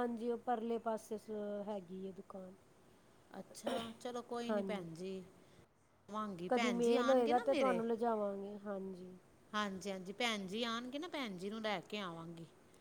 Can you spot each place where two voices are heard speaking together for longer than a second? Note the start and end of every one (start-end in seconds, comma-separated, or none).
6.5-7.8